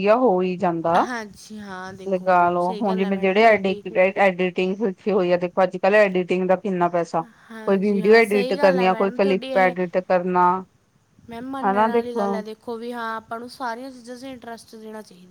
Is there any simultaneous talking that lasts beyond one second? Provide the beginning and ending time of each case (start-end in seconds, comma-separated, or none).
2.1-3.8, 7.6-9.7